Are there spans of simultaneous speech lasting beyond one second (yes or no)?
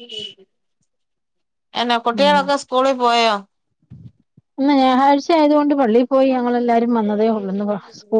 no